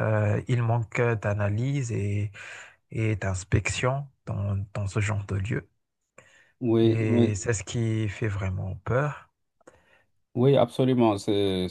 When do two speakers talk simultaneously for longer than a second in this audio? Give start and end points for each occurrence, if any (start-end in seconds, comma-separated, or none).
none